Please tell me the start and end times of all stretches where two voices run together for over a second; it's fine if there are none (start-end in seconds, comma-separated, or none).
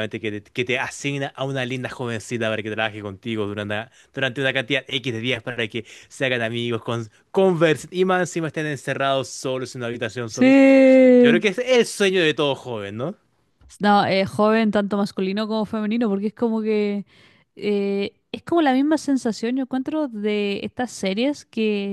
none